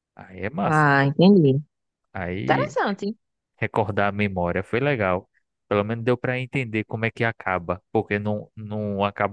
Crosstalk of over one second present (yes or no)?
no